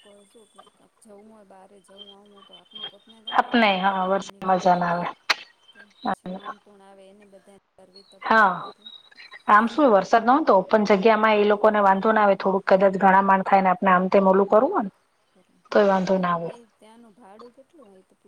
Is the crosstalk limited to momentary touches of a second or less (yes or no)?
no